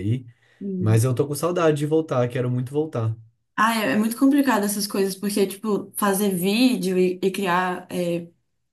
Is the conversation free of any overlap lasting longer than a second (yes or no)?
yes